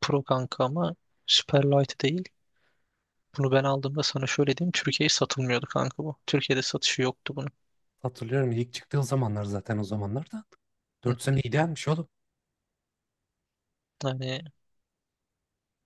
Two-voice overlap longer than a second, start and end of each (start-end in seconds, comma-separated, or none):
none